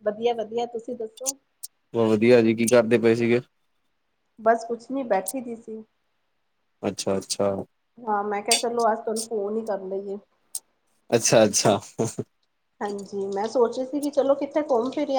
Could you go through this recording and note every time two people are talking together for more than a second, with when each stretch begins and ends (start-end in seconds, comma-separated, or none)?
none